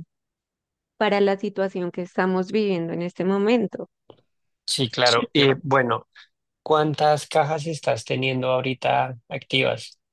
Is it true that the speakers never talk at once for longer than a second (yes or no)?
yes